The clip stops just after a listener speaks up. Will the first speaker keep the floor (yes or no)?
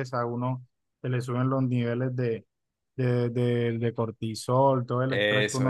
no